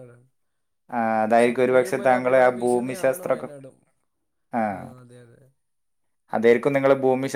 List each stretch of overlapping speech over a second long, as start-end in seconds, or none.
1.4-3.3